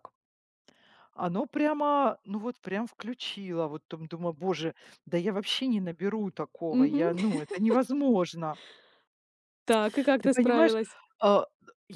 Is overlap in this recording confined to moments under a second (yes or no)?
yes